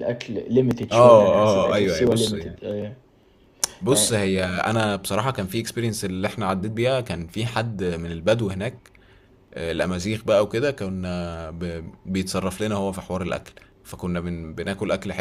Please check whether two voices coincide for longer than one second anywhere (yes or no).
yes